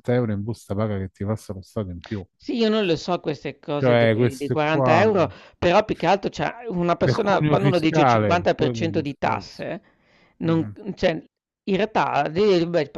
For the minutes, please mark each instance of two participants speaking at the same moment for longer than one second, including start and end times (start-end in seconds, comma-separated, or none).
3.7-5.0, 7.0-9.7